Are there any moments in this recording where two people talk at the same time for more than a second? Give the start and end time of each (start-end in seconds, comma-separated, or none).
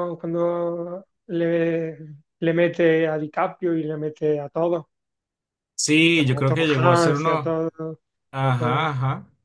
6.4-7.6